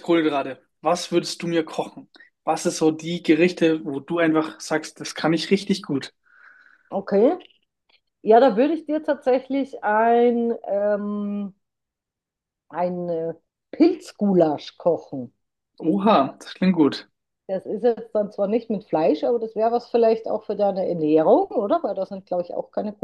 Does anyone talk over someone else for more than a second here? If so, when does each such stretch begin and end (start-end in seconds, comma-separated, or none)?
none